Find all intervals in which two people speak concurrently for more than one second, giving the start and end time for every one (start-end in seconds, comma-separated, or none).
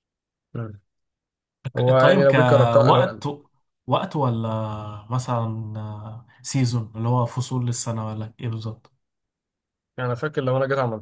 2.0-3.2